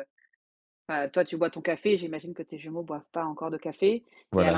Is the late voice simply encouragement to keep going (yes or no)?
yes